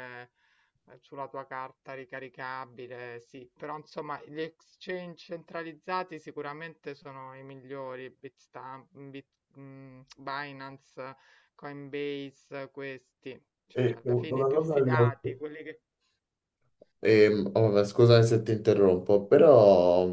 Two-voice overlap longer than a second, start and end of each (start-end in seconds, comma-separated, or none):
13.7-15.1